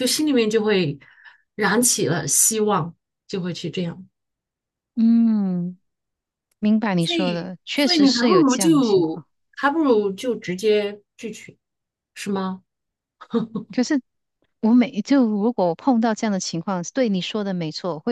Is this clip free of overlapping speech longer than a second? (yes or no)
no